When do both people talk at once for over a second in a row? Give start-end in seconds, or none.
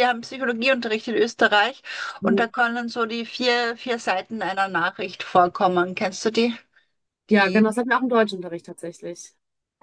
none